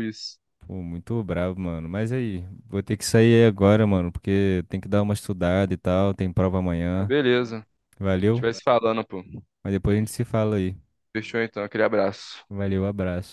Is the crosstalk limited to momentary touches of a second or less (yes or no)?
yes